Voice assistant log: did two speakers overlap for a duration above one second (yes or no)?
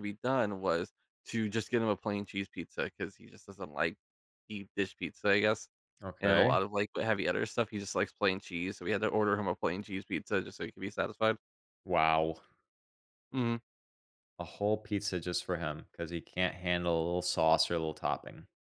no